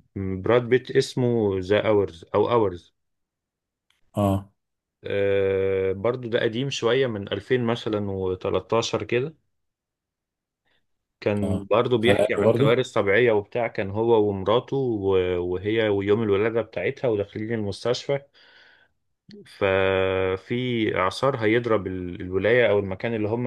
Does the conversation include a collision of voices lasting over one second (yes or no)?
yes